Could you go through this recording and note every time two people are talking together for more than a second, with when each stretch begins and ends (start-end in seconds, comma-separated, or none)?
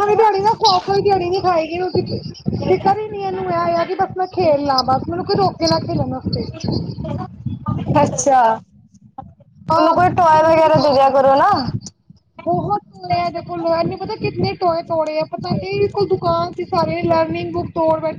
9.8-11.2